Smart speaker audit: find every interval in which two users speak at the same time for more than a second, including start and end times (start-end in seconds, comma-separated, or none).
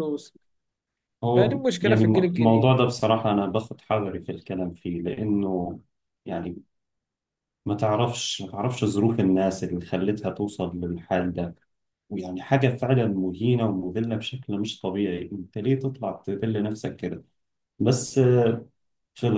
1.3-2.8